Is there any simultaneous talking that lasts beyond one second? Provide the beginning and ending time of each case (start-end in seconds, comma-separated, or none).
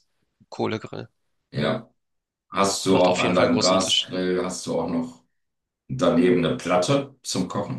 2.9-4.1